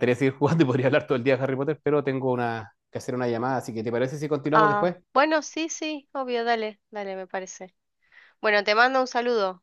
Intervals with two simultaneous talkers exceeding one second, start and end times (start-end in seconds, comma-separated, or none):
none